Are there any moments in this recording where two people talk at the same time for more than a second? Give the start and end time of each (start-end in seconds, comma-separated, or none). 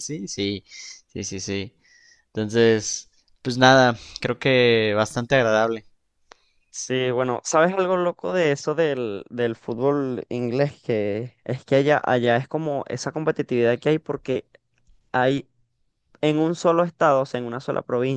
none